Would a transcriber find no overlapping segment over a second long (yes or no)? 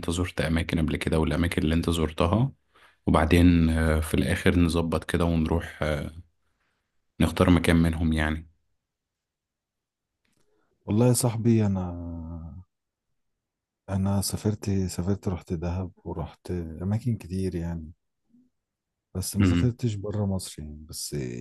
yes